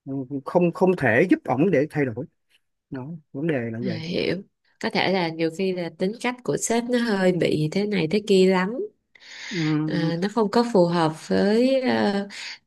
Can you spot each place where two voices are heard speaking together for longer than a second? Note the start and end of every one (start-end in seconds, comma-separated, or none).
none